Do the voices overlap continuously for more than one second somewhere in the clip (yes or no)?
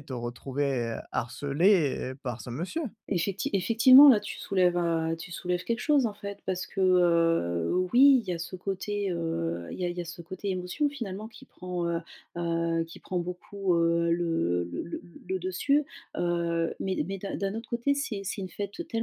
no